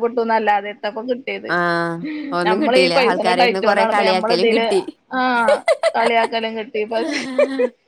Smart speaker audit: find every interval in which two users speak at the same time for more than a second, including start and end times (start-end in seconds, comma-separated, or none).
2.5-4.7